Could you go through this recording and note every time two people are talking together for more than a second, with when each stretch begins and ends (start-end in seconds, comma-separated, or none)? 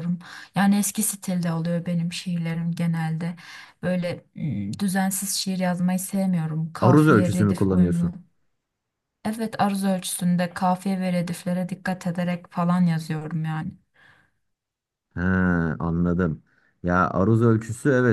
6.8-8.1